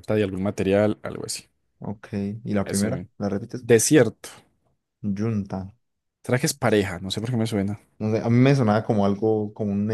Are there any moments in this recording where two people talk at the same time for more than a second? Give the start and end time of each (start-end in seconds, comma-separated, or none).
none